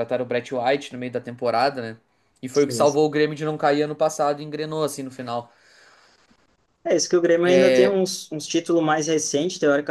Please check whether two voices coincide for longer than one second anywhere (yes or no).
no